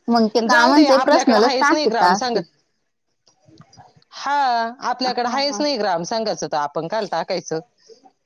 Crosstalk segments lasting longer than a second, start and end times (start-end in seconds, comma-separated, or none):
0.5-2.4